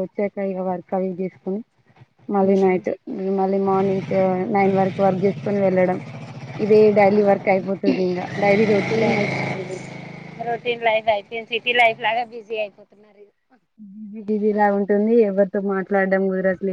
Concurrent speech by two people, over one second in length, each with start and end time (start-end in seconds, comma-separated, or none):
none